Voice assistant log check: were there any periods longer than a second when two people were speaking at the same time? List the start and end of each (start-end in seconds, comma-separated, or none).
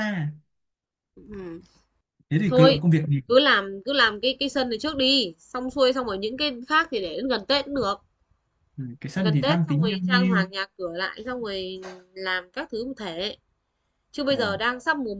9.1-10.5